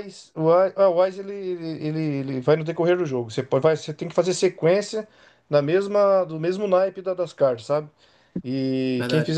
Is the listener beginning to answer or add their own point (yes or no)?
no